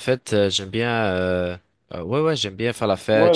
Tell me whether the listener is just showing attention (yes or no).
yes